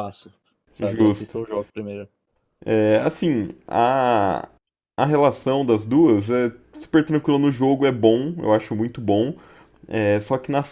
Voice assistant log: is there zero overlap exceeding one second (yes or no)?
yes